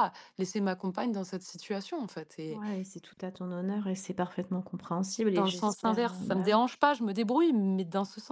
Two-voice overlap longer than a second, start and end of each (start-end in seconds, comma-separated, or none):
5.3-6.6